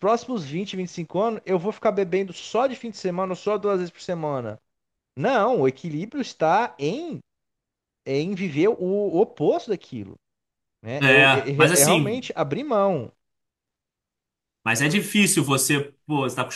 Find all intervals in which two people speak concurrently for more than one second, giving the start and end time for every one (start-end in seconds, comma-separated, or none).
11.0-12.3